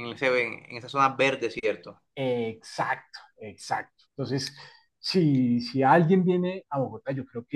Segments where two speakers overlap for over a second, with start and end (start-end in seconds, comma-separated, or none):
none